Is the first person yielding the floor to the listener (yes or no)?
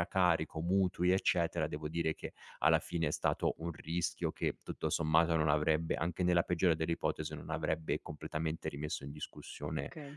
yes